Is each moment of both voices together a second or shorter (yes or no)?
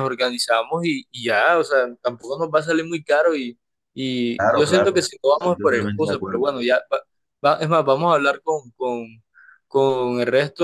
no